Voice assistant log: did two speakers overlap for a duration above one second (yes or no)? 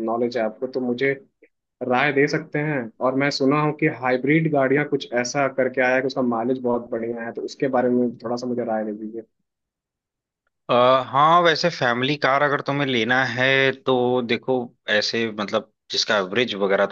no